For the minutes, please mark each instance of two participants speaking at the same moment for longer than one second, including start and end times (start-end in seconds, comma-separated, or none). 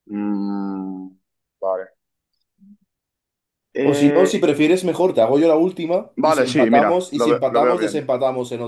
6.2-8.0